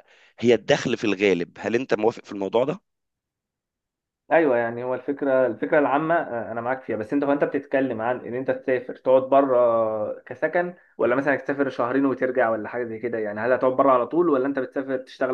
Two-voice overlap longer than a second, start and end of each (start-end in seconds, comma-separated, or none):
none